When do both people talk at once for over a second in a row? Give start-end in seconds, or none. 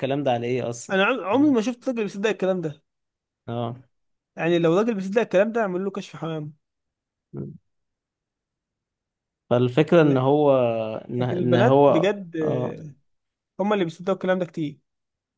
11.2-12.8